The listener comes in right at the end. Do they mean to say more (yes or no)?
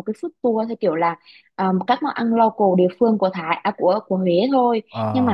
no